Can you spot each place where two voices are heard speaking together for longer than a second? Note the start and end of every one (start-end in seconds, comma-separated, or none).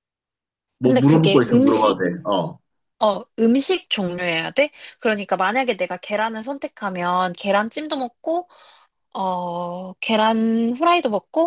0.8-2.0